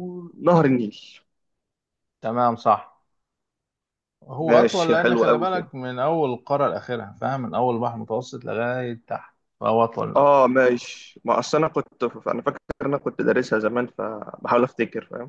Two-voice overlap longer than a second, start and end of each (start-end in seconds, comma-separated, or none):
4.5-5.7